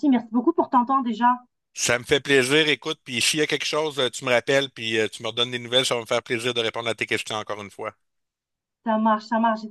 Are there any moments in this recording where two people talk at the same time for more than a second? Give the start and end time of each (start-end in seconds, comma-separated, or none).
none